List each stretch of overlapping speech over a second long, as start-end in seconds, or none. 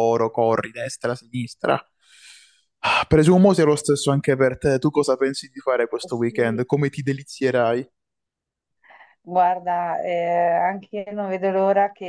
none